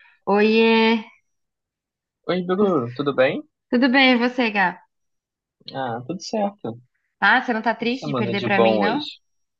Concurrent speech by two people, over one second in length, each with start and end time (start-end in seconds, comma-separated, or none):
7.8-9.1